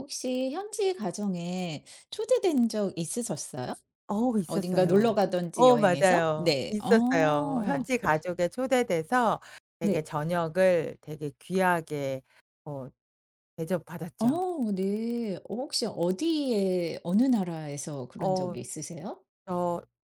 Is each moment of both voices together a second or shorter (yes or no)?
no